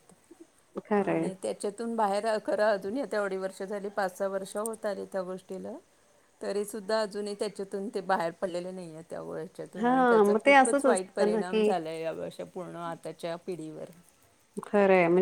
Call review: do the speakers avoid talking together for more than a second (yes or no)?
no